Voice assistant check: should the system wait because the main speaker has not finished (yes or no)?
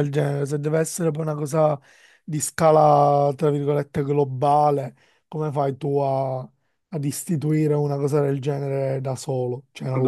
no